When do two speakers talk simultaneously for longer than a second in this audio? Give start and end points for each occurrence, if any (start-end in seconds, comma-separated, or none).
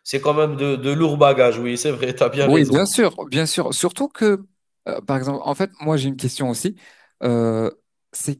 none